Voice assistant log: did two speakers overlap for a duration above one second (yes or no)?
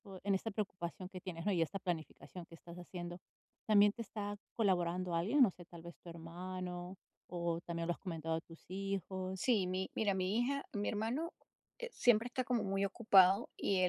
no